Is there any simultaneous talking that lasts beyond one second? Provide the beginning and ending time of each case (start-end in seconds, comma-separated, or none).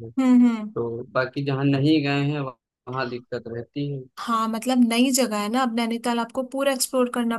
none